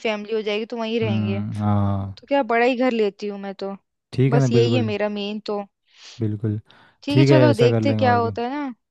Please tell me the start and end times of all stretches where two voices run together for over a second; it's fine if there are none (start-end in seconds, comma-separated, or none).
7.1-8.4